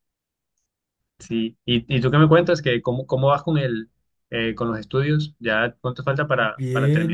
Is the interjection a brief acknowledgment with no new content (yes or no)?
no